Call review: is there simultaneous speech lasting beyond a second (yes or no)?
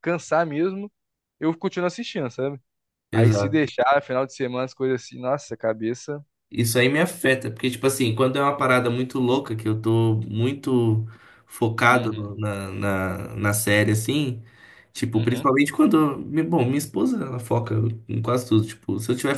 no